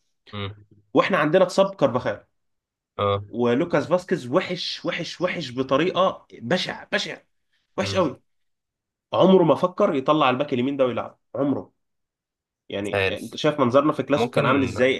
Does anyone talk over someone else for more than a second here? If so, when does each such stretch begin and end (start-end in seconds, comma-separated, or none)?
none